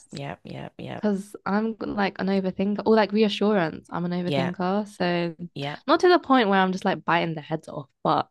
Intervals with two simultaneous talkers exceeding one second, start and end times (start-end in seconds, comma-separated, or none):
none